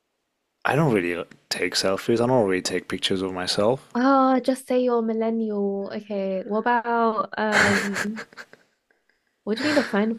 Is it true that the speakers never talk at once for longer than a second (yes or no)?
yes